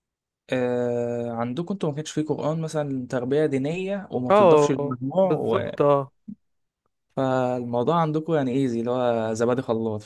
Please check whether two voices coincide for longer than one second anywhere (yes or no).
yes